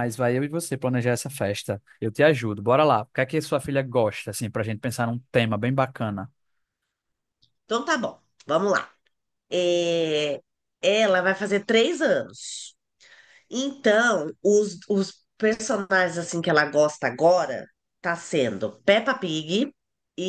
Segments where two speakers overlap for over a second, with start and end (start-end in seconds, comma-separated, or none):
none